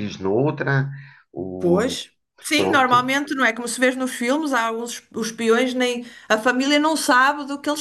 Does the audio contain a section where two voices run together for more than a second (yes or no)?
no